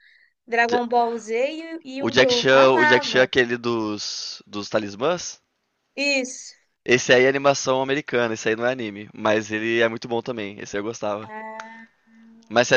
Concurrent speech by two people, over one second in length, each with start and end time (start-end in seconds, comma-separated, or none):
2.0-3.3